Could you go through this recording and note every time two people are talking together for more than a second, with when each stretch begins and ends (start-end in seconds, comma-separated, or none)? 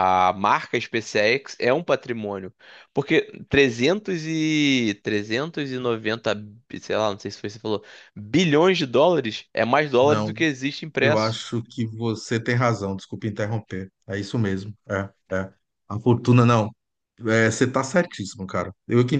none